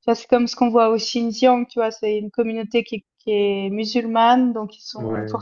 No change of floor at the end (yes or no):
yes